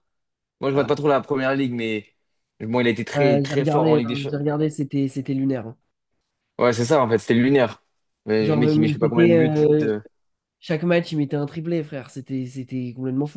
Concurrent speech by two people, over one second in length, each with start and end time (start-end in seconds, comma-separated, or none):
3.1-4.5, 8.4-9.9